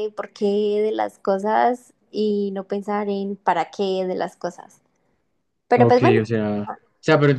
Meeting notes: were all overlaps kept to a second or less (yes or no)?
yes